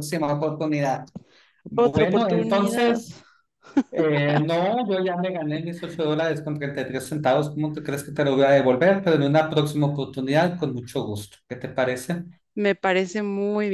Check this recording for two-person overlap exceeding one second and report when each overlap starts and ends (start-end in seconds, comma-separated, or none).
1.8-3.0